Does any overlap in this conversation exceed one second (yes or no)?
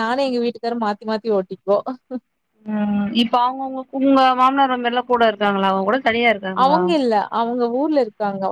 no